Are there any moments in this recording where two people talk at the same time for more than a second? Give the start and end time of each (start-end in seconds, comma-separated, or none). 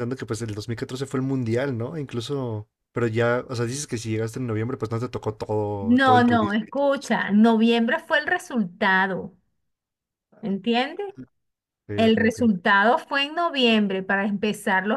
5.8-7.1